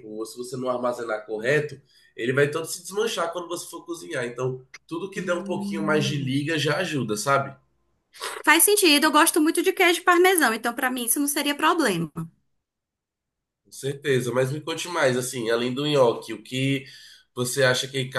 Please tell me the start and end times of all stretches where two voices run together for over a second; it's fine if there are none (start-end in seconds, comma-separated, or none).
5.1-6.5